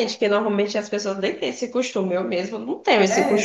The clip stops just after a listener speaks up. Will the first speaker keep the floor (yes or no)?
no